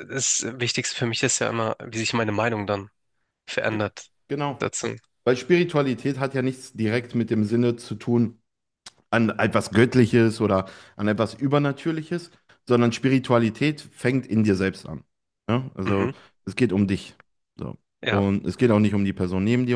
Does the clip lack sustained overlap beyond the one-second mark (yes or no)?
yes